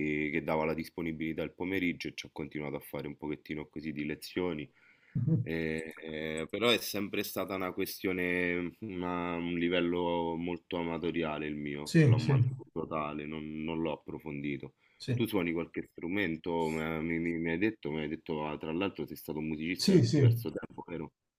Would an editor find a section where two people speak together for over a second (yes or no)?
no